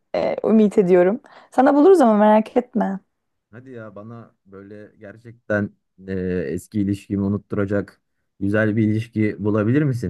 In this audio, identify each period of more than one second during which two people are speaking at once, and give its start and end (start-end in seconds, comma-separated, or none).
none